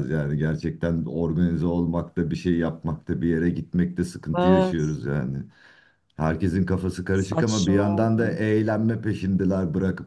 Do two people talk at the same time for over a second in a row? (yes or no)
yes